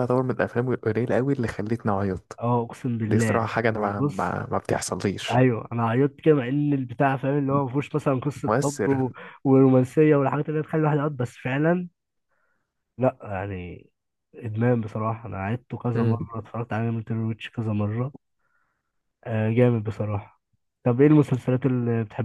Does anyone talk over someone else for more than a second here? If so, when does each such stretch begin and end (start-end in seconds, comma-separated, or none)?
3.1-4.4